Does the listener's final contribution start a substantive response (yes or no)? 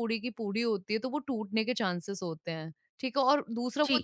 no